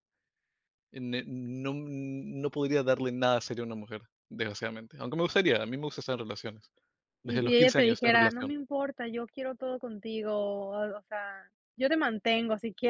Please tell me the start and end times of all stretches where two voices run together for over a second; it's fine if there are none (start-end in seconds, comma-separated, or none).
7.2-8.5